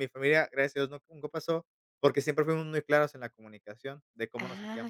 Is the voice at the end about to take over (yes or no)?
yes